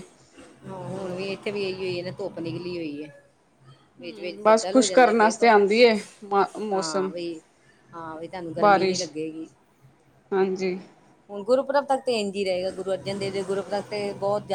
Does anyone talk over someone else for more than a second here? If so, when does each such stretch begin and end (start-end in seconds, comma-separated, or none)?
4.0-5.5